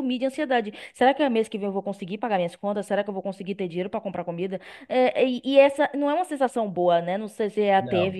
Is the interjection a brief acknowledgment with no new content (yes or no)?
yes